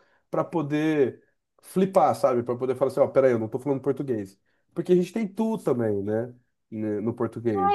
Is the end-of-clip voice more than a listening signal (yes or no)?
yes